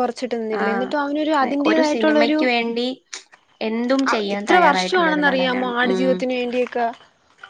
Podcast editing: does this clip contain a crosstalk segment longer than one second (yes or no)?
yes